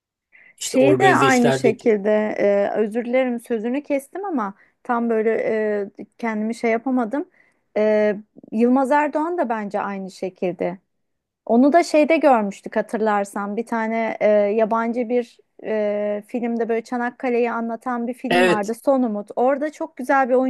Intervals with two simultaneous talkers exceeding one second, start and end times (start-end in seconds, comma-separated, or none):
0.6-1.9